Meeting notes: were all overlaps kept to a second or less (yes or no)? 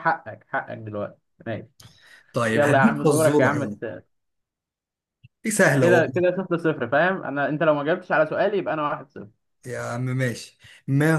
no